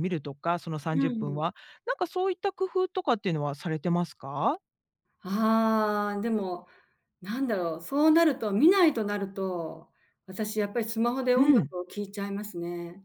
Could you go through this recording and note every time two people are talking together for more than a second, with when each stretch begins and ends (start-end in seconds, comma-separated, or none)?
none